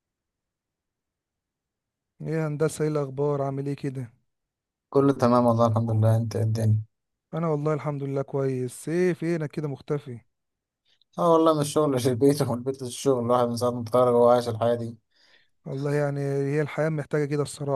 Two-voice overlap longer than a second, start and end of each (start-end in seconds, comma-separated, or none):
none